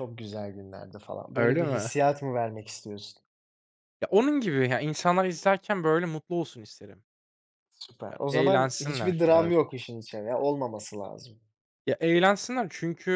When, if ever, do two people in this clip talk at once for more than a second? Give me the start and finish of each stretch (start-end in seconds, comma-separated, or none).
8.1-9.5